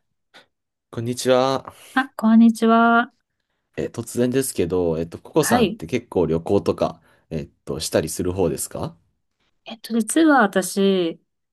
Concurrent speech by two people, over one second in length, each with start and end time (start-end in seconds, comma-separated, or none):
none